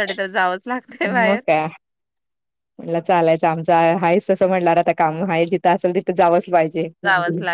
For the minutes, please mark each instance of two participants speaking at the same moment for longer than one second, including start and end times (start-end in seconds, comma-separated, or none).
none